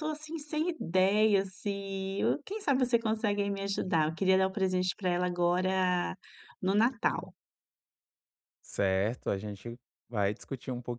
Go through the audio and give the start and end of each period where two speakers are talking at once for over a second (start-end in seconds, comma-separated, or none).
none